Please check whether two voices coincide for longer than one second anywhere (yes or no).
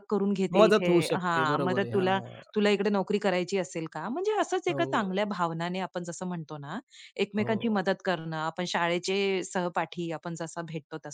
yes